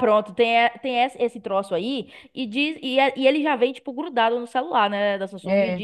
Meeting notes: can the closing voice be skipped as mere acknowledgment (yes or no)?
yes